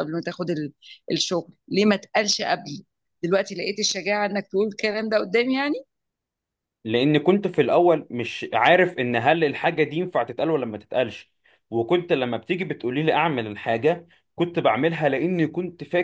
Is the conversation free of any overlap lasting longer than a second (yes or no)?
yes